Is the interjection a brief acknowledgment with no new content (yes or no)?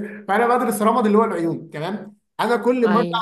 yes